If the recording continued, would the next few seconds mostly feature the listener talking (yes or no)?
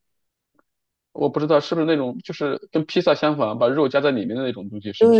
yes